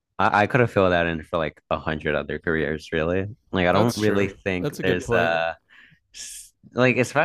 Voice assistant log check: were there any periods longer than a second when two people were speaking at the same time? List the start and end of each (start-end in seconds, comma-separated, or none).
3.7-5.3